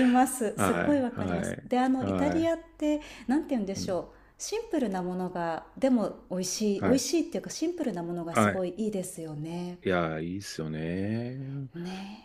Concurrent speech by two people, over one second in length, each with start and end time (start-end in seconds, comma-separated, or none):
0.5-2.5